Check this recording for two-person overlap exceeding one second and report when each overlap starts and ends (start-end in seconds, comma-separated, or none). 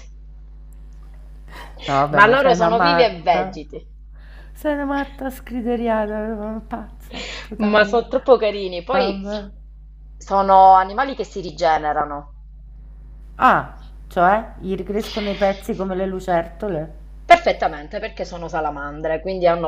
2.1-3.6